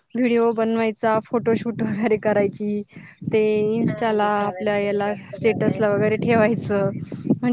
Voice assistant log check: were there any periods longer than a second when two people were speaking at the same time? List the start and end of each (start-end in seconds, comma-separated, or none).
3.9-5.8